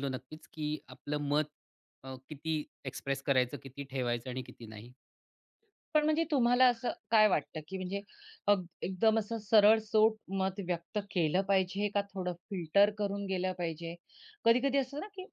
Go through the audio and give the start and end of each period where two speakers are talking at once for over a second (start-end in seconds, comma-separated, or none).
none